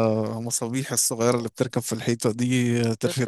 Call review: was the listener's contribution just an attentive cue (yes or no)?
yes